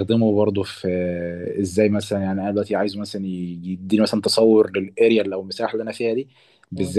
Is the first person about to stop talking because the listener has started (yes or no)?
no